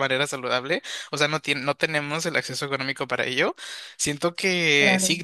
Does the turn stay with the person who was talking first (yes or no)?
yes